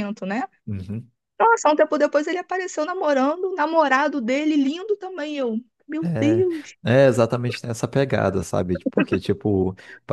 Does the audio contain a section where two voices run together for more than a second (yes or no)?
no